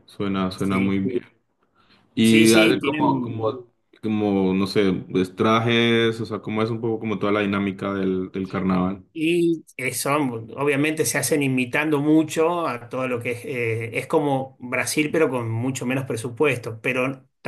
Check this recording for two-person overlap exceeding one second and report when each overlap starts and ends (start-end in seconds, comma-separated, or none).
2.2-3.6